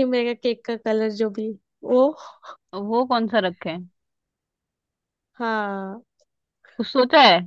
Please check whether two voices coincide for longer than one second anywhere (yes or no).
no